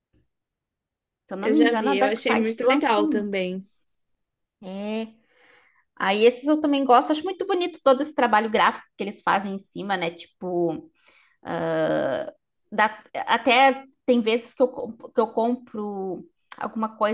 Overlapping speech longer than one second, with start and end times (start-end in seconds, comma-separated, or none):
1.4-3.2